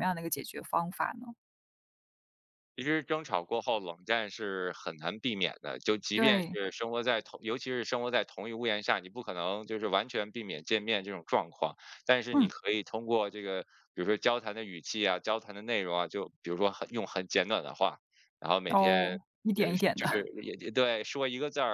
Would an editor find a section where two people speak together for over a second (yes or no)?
yes